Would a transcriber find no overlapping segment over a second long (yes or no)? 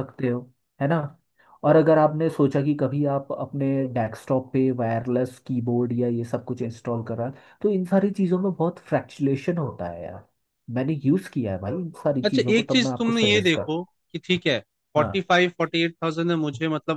no